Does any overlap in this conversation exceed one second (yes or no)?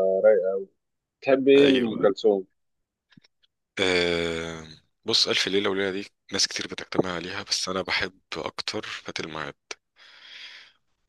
no